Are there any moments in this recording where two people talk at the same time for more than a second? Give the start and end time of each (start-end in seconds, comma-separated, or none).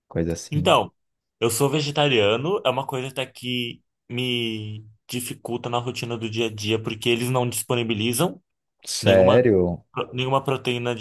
none